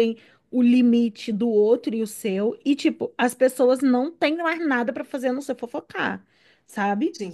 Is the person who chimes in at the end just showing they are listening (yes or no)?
yes